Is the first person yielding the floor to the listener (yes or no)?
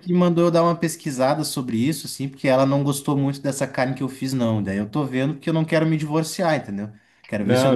no